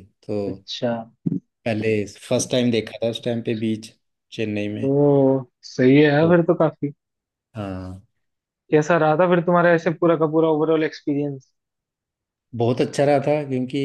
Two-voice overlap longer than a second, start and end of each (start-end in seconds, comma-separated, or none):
none